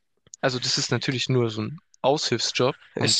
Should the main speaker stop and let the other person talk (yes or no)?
no